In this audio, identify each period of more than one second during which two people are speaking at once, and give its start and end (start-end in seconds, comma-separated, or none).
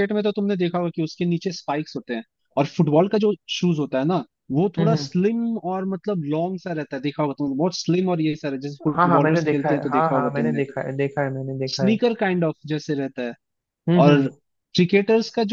9.0-10.6